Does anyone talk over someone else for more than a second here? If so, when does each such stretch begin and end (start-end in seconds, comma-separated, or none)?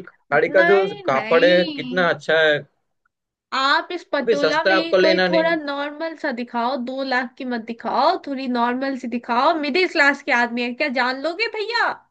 0.6-2.1, 4.2-5.6